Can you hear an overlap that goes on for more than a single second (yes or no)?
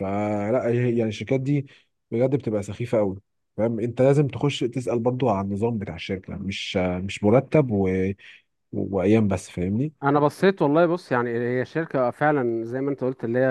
no